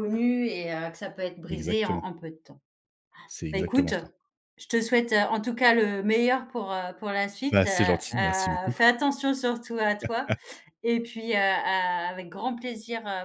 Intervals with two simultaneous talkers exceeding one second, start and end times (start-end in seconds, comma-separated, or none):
7.5-8.8